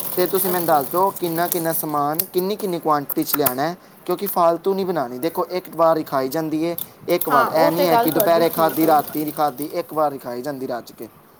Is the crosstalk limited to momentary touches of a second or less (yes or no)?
no